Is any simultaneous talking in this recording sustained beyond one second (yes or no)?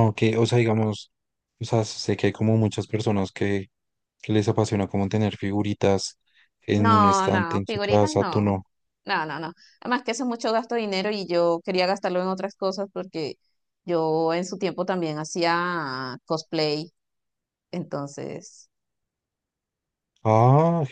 yes